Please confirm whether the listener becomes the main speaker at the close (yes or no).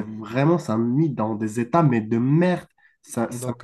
no